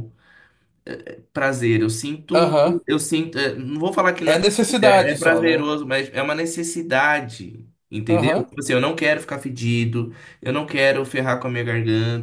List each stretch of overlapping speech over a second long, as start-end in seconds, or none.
4.2-5.7